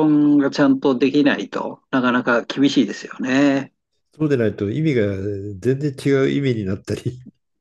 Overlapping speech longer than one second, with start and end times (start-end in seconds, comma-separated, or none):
none